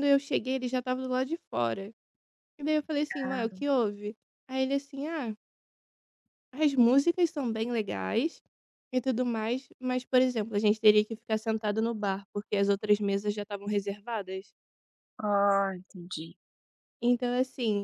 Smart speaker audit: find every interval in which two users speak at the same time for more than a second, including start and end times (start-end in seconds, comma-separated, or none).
none